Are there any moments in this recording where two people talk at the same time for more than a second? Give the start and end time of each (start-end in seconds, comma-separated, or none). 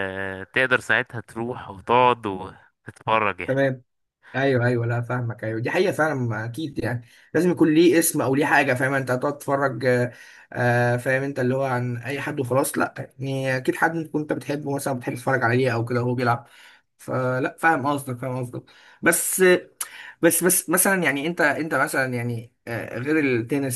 none